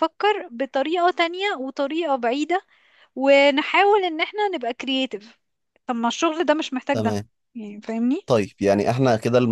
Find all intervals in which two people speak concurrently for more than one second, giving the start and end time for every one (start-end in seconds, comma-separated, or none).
none